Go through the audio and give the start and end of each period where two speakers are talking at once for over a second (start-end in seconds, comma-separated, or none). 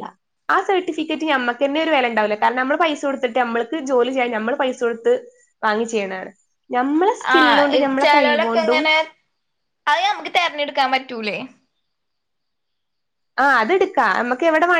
none